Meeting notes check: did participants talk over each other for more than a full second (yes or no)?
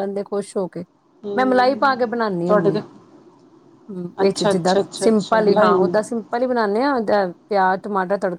yes